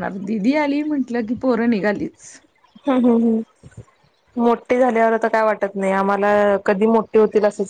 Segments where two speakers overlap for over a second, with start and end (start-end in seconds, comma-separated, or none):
none